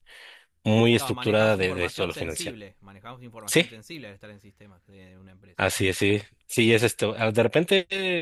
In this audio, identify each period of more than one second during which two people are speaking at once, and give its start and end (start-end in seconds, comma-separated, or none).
1.0-2.6